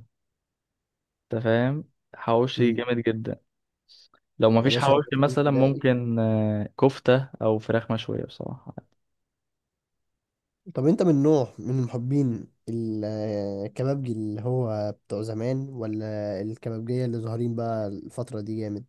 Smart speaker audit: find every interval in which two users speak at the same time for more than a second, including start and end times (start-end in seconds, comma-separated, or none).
4.6-5.8